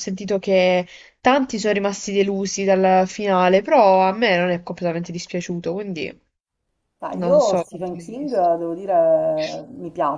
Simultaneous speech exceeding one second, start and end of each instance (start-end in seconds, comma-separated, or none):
7.1-8.5